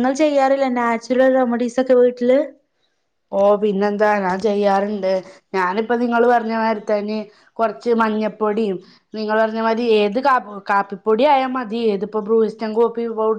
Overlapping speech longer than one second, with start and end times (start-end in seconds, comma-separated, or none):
none